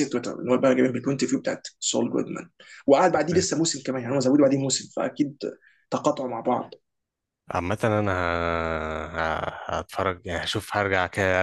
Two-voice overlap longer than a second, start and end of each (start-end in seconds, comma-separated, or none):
none